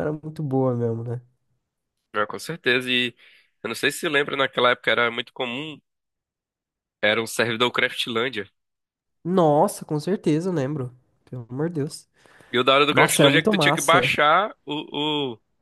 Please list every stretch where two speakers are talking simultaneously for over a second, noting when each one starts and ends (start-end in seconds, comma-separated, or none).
12.9-14.1